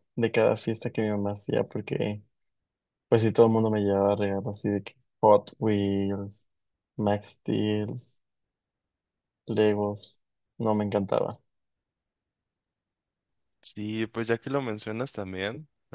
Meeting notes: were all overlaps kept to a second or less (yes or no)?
yes